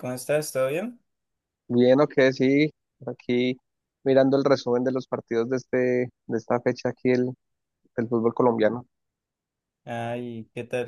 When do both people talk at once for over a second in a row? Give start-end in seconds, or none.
none